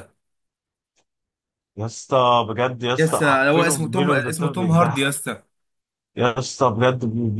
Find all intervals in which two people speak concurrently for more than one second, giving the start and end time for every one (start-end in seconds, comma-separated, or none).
3.0-5.1